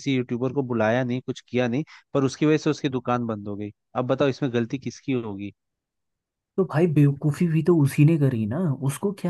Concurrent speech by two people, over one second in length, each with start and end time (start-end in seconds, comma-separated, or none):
none